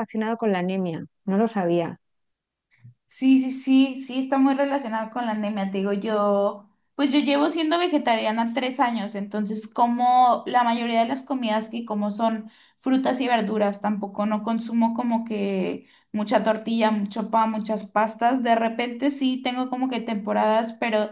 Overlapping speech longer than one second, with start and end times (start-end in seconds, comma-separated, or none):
none